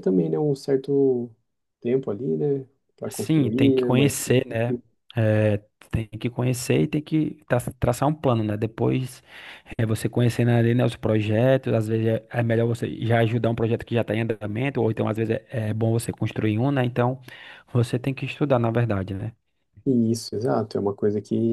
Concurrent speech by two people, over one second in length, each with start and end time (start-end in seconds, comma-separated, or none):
3.1-4.3